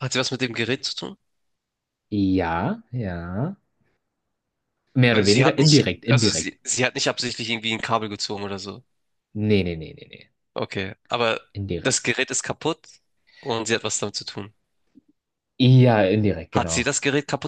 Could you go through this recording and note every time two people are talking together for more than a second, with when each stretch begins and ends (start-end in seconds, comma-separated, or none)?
5.1-6.6